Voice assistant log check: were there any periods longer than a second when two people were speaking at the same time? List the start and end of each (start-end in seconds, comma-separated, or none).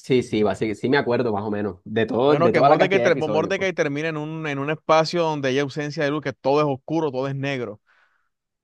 2.2-3.7